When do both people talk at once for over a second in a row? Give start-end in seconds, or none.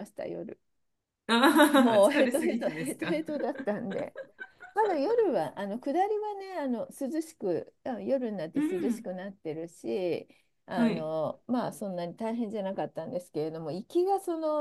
1.8-3.2